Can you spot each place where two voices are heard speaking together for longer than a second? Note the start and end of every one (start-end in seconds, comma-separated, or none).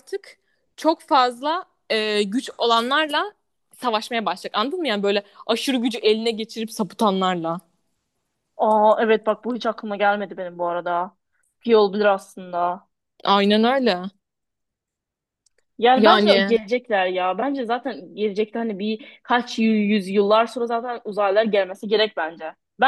none